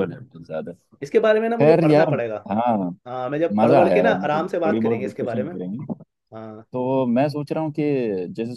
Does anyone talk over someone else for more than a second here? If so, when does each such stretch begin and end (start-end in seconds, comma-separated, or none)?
3.6-5.5